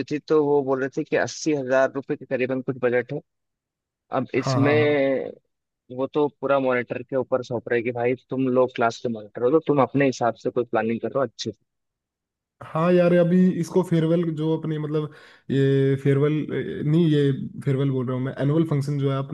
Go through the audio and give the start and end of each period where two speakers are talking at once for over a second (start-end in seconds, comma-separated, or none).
none